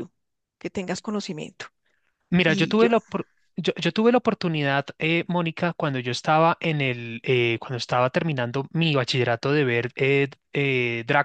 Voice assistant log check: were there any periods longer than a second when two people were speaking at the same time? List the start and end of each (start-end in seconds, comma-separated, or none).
none